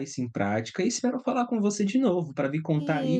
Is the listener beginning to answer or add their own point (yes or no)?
yes